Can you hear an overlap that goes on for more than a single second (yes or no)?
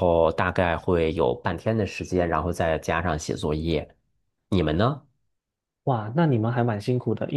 no